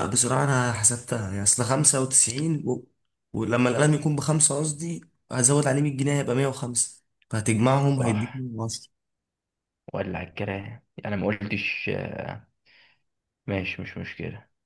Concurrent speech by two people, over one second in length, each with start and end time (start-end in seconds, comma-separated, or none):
none